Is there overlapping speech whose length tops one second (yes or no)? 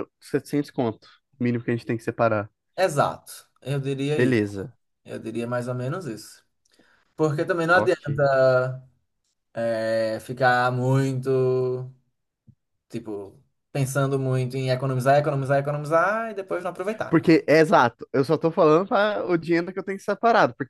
no